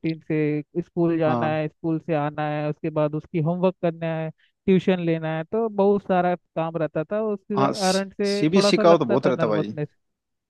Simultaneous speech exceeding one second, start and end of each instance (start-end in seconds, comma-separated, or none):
7.6-9.7